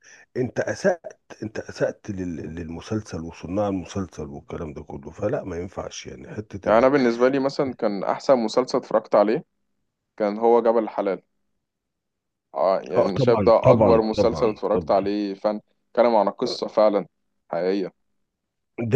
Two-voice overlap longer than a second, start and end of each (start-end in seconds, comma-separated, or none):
13.0-15.2